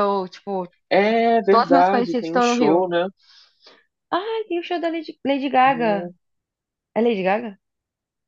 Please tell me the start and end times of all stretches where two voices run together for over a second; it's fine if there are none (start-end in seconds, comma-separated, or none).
1.5-2.9